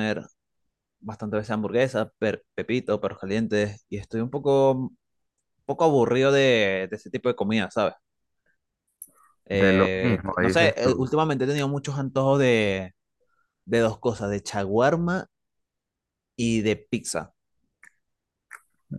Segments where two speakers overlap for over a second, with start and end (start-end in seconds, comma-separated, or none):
9.5-11.1